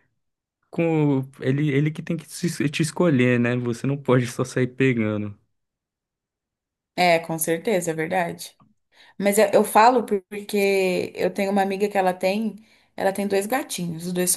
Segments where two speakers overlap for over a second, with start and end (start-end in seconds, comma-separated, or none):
none